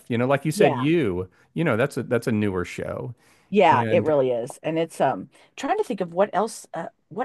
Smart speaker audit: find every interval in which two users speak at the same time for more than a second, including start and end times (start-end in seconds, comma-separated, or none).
none